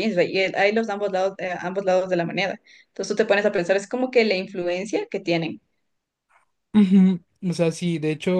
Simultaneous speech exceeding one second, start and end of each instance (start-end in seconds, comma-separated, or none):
none